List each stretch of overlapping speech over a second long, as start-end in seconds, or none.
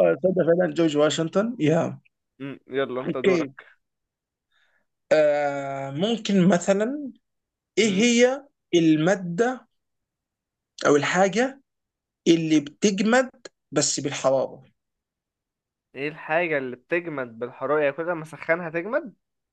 none